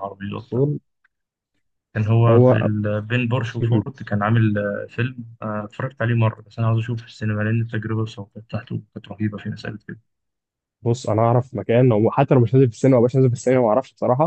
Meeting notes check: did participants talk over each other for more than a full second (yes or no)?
no